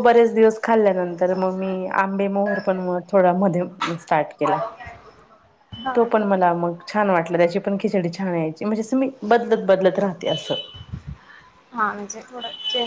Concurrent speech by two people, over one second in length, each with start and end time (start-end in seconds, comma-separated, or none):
none